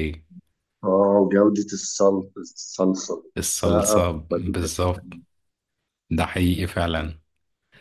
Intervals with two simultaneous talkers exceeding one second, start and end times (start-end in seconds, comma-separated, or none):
3.4-5.1